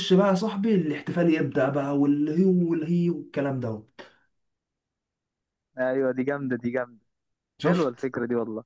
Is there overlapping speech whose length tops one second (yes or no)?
no